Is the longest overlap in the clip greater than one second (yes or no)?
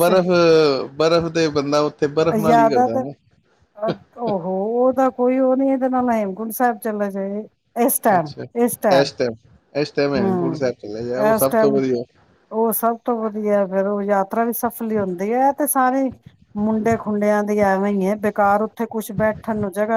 no